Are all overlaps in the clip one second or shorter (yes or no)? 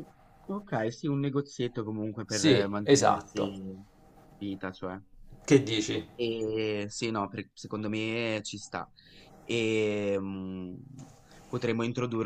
no